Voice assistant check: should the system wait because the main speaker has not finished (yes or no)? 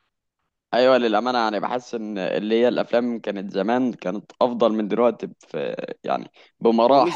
no